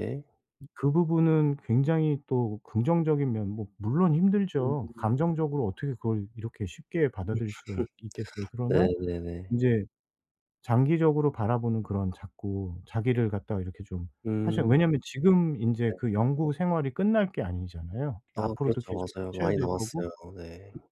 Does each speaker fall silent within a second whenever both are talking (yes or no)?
no